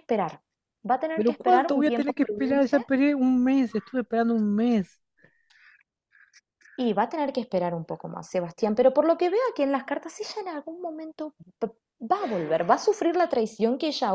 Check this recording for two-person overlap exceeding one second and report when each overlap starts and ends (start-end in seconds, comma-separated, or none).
1.1-2.8